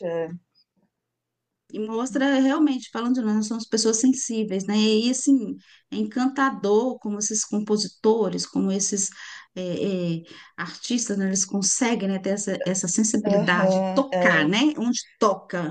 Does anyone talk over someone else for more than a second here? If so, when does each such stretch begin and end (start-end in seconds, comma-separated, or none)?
13.2-14.5